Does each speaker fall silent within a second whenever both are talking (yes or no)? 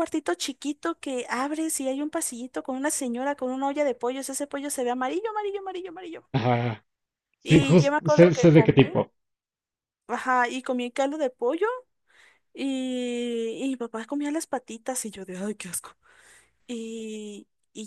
no